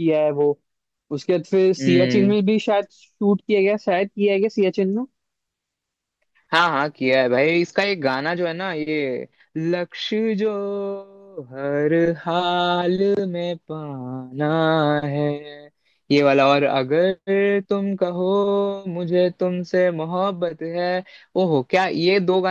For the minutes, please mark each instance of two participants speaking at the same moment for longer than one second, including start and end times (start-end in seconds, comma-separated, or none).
none